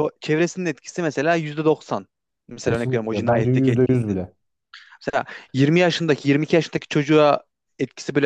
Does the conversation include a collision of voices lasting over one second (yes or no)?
yes